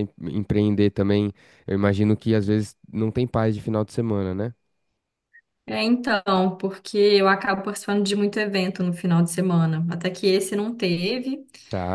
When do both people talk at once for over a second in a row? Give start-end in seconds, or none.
none